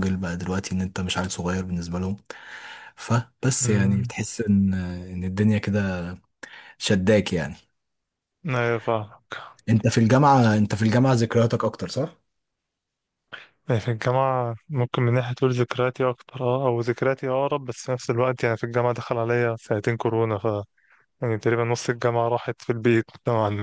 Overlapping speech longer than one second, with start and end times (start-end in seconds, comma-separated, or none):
none